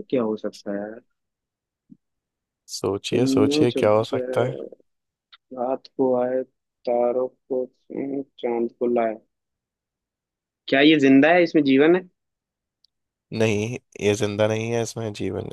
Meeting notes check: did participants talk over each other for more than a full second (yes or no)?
yes